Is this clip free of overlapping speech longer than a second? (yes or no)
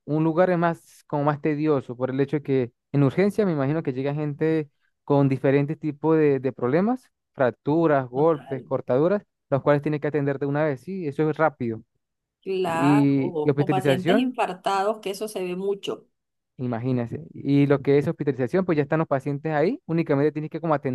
no